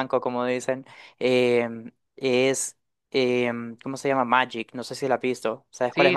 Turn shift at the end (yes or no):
yes